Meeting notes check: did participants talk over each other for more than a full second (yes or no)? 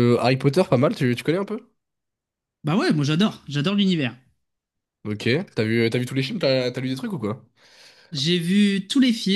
no